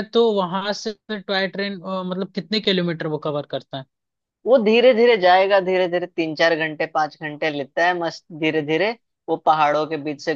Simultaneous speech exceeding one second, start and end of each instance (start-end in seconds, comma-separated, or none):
none